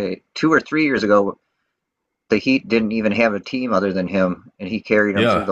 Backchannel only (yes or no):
no